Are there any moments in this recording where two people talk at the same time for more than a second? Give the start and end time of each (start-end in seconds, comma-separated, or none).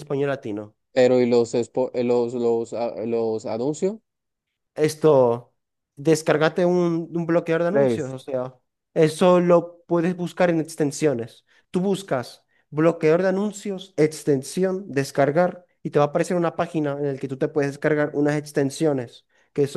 none